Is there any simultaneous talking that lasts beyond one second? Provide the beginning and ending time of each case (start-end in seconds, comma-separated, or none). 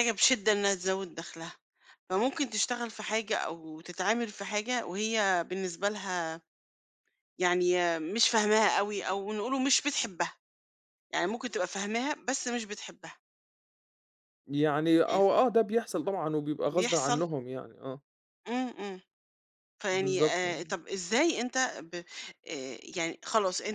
none